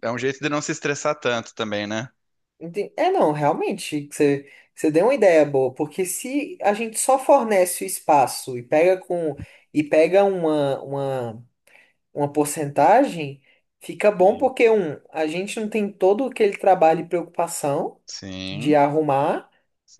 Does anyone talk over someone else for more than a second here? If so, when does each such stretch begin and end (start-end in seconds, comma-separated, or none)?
none